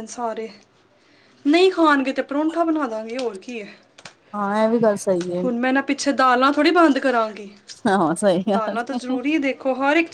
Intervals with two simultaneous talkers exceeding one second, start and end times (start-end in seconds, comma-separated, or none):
none